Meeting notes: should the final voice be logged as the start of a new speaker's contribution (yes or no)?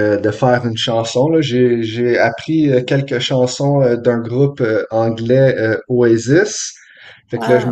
no